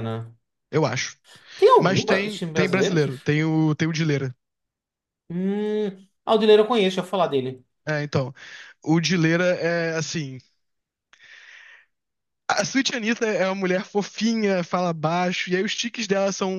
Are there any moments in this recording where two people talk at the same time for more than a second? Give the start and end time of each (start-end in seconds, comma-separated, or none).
1.8-3.1